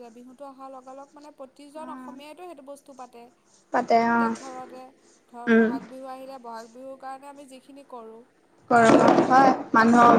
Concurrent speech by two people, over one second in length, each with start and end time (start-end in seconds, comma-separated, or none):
none